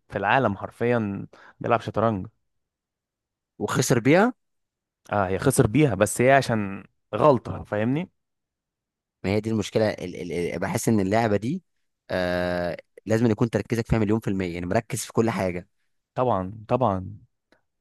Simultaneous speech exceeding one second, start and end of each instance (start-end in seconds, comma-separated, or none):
none